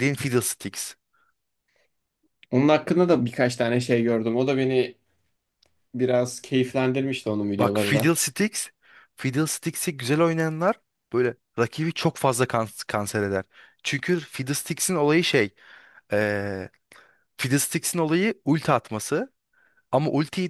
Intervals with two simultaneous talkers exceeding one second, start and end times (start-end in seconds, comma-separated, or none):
none